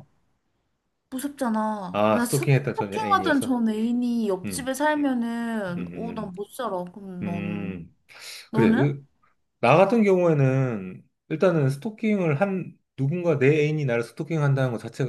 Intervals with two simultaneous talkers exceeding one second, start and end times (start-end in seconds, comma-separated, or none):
1.9-3.6